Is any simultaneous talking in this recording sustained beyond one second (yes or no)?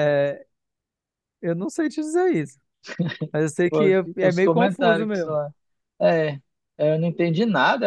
yes